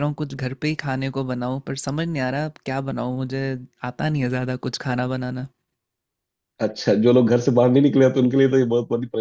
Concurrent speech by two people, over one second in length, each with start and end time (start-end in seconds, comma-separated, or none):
none